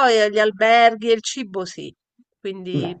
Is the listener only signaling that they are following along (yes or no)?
yes